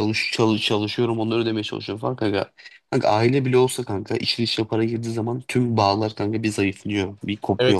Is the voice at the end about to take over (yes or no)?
yes